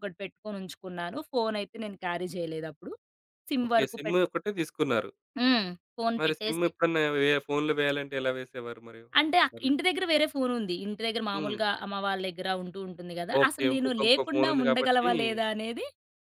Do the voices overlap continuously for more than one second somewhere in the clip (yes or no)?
yes